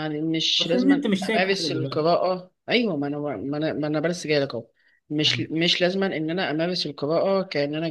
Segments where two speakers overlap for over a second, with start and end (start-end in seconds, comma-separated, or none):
0.6-2.2